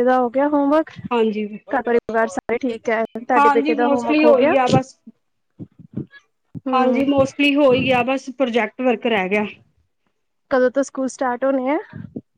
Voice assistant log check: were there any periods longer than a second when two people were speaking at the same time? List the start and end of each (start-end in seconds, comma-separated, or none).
none